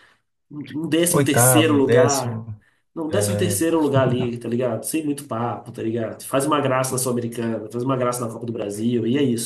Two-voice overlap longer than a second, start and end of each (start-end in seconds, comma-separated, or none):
1.1-2.4